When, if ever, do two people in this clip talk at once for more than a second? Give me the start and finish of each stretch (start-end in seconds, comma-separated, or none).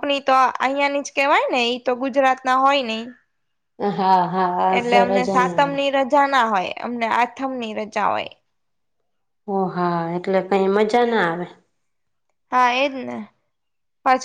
none